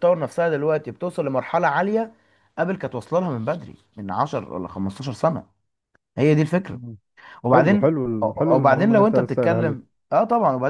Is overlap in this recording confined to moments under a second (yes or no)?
no